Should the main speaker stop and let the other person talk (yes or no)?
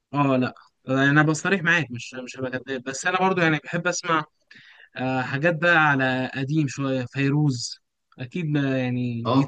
yes